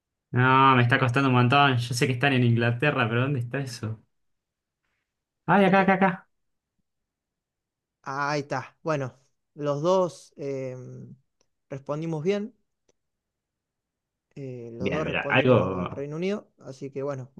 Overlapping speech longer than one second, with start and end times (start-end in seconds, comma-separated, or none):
14.8-16.0